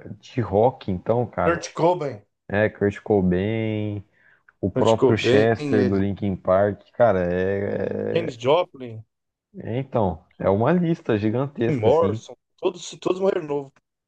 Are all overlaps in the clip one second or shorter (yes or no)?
no